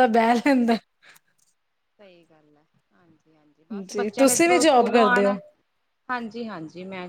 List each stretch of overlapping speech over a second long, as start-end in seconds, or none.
3.9-5.3